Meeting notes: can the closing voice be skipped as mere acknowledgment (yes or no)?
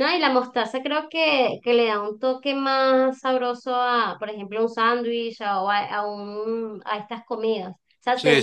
yes